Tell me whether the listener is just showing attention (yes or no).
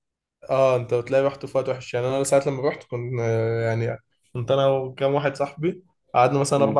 yes